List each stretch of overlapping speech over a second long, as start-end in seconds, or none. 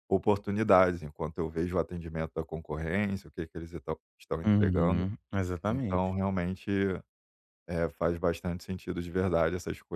none